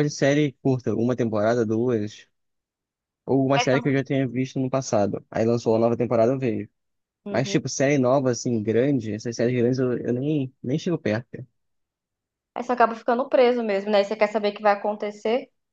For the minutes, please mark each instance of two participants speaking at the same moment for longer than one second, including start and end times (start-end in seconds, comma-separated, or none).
none